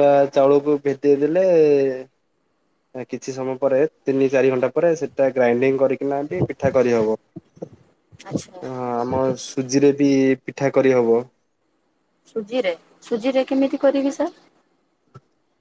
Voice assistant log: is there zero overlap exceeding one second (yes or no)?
yes